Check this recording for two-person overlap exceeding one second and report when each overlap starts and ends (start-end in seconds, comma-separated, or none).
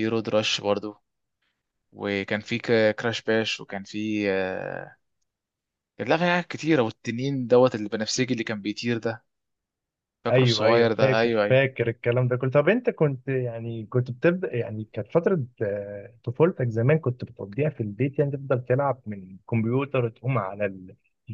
10.3-11.6